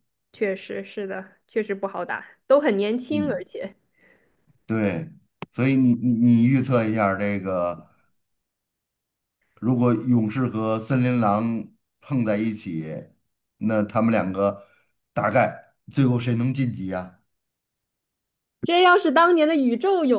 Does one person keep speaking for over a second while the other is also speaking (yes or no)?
no